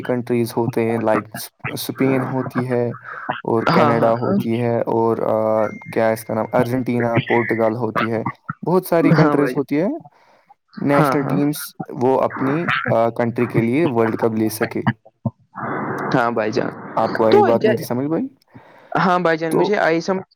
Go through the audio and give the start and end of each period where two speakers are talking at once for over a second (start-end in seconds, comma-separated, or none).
none